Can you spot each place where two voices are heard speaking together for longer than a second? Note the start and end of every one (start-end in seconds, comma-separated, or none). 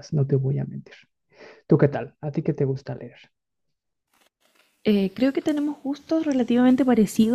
none